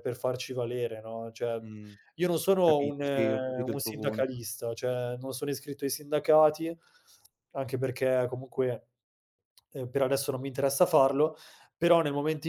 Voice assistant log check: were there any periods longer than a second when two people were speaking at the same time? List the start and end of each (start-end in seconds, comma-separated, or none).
2.6-4.4